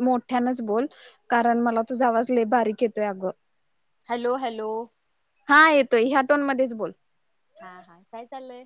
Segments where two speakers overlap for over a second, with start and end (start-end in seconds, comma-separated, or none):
none